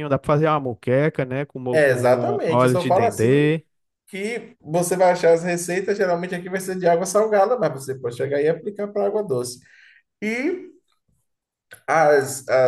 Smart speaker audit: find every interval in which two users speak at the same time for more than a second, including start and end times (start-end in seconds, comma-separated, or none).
1.7-3.6